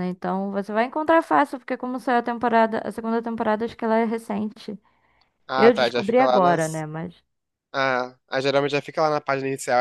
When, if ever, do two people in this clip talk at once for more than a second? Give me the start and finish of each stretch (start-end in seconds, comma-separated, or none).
5.6-6.8